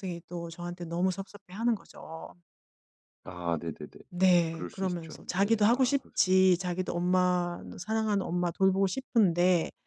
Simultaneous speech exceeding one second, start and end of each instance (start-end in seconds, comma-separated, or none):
4.5-6.2